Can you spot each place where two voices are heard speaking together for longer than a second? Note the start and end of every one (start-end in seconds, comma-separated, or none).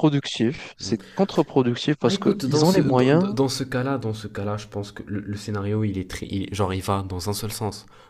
2.0-3.4